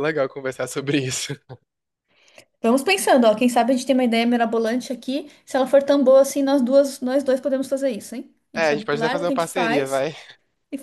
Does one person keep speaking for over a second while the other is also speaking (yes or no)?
yes